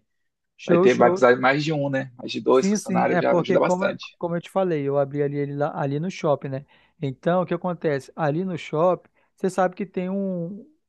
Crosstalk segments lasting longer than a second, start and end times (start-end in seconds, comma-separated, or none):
2.5-4.2